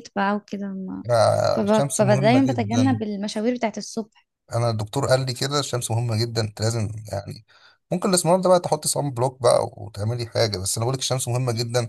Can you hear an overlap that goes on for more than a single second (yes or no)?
yes